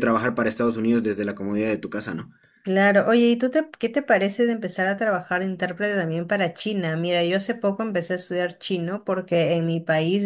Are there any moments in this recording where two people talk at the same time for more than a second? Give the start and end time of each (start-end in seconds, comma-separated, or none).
none